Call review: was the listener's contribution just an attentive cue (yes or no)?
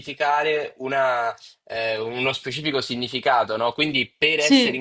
yes